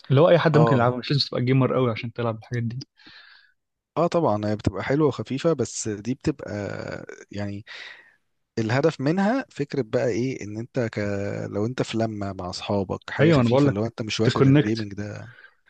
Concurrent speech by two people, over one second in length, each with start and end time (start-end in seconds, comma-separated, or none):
13.2-14.9